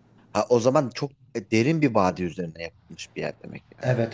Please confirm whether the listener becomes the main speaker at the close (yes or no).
yes